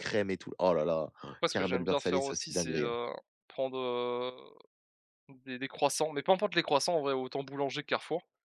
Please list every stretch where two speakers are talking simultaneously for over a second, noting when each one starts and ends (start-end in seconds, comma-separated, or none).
1.5-3.0